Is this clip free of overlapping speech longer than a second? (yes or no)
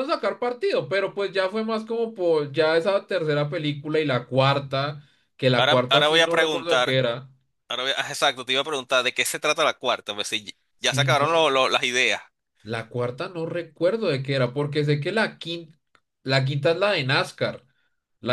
no